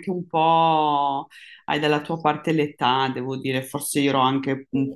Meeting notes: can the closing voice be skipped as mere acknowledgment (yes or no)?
yes